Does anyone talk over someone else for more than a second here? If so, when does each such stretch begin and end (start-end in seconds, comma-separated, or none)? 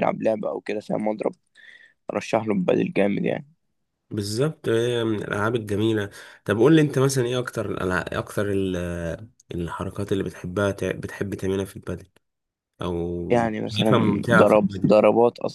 13.3-15.0